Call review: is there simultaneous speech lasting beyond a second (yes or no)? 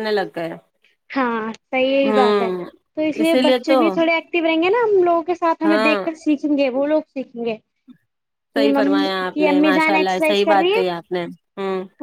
yes